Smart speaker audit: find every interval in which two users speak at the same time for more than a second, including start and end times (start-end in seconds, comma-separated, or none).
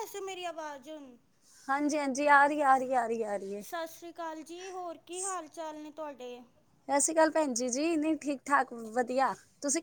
none